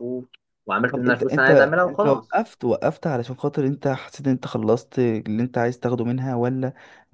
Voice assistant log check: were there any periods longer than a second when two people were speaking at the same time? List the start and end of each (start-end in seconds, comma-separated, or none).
0.9-2.4